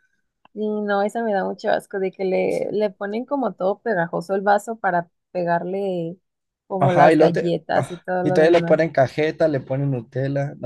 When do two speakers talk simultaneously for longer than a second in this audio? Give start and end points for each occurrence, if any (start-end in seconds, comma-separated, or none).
6.8-8.9